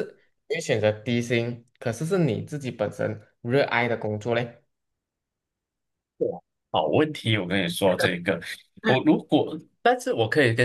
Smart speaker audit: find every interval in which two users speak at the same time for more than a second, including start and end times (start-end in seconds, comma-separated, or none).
none